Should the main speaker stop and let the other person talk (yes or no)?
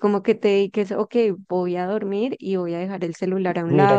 yes